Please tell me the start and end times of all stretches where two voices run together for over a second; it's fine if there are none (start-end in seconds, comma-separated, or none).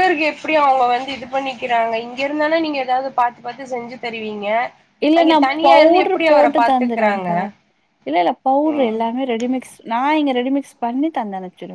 5.2-7.3